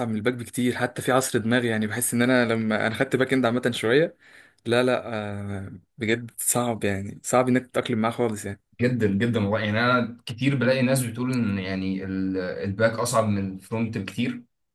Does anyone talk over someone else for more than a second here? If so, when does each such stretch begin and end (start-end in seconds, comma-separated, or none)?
none